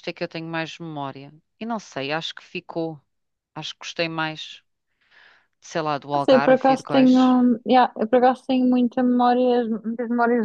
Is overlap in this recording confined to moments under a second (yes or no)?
no